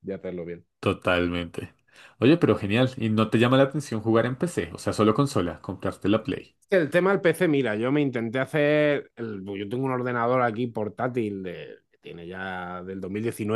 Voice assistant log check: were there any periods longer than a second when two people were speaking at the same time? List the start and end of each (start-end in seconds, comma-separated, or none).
none